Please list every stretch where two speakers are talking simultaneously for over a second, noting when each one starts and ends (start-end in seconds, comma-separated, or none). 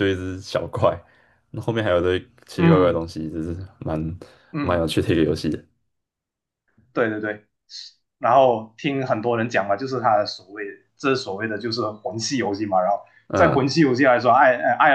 none